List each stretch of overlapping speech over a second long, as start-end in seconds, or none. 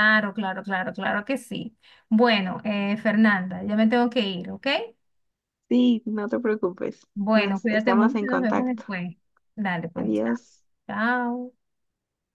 7.1-8.8